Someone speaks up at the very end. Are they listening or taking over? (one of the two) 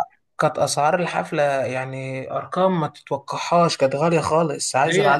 listening